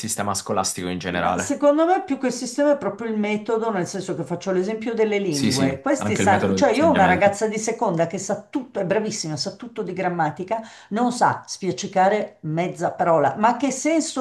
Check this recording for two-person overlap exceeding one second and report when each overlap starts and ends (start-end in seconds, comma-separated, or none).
5.3-7.4